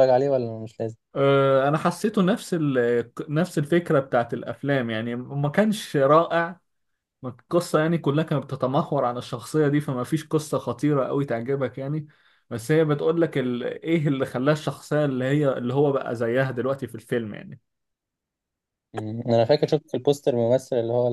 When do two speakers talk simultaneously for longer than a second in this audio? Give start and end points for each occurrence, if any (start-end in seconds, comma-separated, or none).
none